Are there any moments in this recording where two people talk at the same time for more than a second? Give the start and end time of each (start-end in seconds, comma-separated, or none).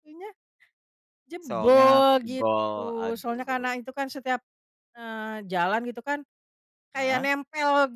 1.5-3.7